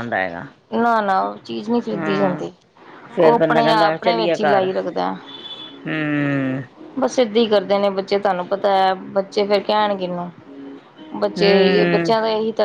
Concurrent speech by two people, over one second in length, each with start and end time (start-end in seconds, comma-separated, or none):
3.2-4.7